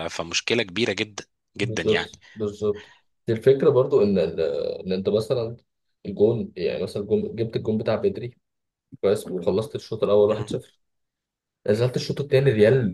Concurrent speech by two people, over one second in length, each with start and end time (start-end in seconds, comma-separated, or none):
none